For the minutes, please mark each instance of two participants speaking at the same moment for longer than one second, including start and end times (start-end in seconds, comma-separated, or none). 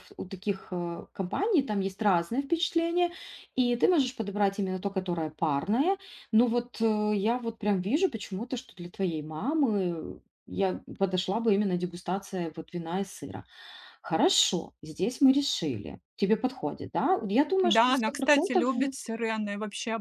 17.6-18.9